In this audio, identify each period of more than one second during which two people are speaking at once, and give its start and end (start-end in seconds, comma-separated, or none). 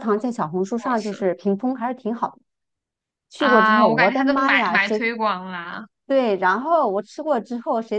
3.4-5.1